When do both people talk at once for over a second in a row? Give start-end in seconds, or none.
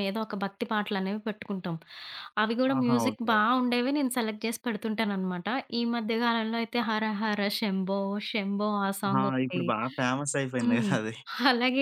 none